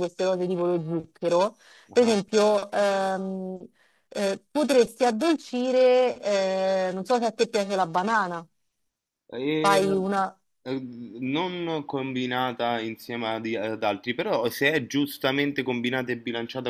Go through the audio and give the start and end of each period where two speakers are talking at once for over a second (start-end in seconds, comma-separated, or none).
none